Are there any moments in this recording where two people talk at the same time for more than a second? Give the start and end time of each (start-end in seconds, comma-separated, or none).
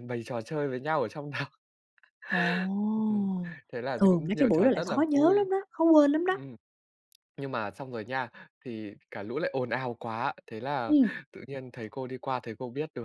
4.0-5.5